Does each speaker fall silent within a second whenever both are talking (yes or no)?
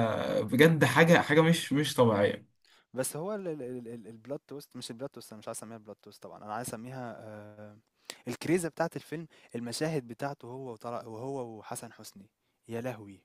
yes